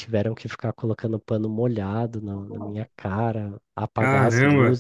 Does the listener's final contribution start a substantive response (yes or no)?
no